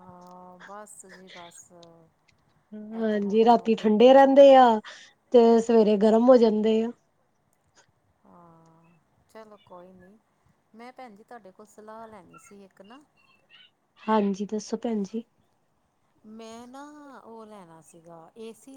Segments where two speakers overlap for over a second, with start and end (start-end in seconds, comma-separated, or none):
3.0-4.5